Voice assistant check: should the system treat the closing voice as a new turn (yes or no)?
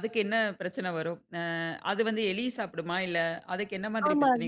yes